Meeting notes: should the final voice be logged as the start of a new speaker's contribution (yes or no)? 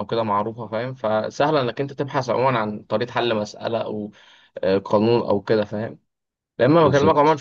no